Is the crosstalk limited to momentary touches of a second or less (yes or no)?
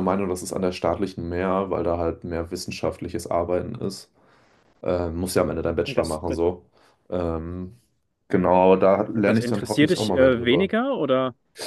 no